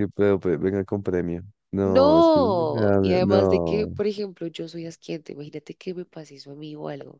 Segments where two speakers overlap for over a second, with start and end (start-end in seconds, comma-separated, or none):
1.8-3.9